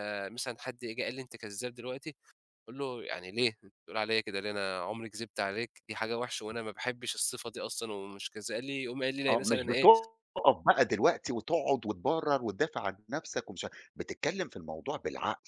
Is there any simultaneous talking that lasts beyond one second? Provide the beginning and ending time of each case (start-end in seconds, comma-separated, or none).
none